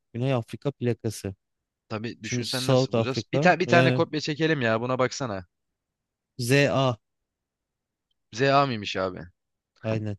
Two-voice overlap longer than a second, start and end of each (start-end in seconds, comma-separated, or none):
2.2-4.0